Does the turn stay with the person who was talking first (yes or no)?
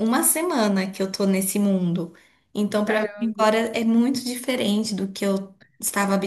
no